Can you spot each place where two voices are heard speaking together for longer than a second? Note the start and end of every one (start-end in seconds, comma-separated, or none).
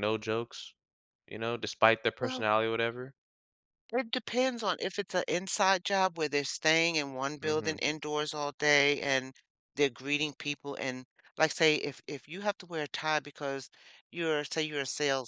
none